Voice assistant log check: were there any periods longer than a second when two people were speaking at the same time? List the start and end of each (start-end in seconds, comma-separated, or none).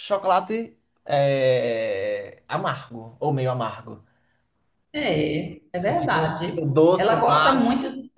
5.8-7.7